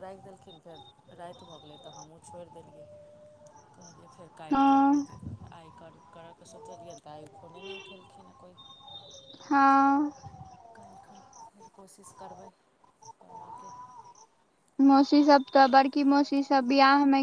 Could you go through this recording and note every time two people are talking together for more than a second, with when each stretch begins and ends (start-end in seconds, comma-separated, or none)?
none